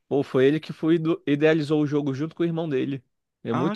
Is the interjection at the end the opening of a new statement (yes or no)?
yes